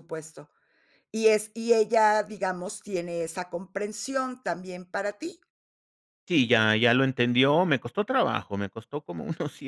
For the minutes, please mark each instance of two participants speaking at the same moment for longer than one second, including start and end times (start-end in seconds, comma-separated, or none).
none